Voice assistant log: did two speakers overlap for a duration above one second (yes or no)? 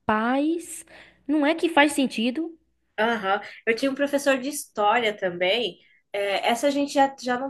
no